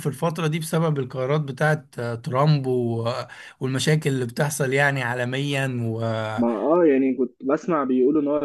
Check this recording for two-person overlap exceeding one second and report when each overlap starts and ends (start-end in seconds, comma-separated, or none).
none